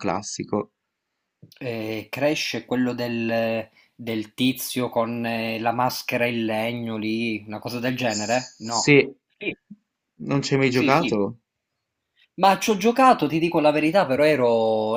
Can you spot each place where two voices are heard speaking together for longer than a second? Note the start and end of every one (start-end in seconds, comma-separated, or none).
none